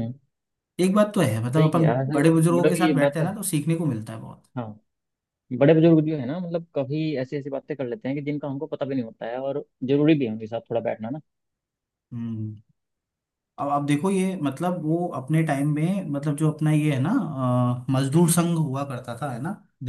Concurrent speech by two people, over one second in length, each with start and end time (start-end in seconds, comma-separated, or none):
1.6-3.4